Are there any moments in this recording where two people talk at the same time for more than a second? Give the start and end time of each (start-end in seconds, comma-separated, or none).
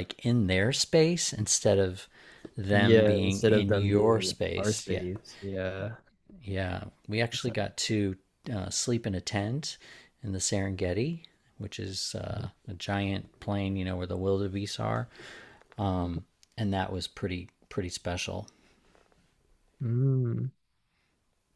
2.7-5.0